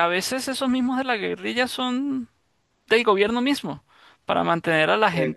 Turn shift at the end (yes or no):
no